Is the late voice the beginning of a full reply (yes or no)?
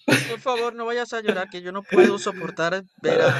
no